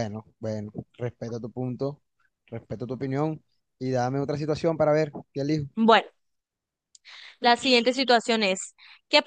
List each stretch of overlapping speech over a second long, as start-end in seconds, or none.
none